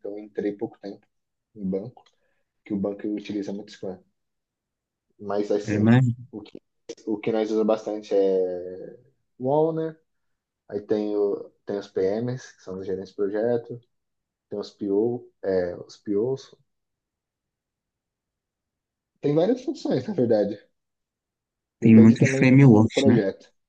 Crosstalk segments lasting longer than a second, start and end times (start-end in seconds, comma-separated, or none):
21.8-23.2